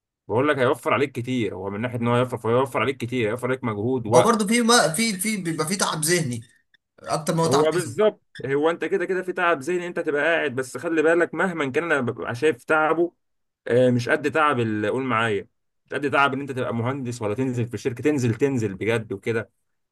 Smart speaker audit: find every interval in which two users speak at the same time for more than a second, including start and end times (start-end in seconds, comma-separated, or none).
none